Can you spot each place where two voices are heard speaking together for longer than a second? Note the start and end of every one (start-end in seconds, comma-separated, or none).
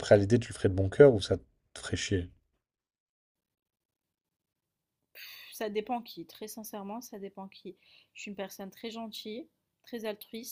none